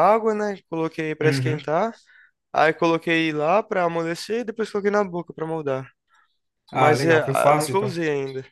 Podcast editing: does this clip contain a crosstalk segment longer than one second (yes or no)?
yes